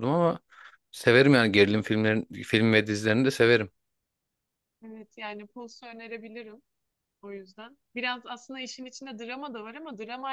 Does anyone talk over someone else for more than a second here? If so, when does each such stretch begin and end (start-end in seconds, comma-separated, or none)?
none